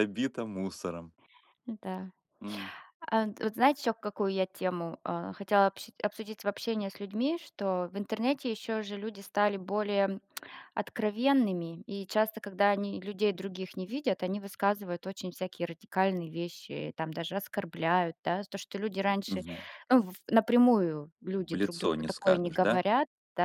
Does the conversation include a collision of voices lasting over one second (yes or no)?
yes